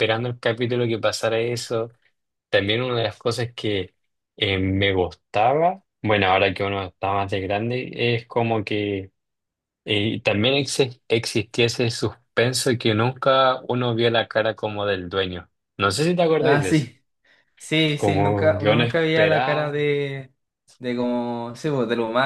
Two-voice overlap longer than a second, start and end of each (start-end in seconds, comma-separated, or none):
18.0-19.8